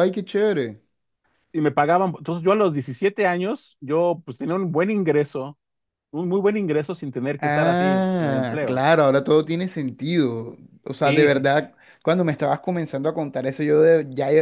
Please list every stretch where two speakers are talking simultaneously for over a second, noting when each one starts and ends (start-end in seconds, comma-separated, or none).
7.4-8.9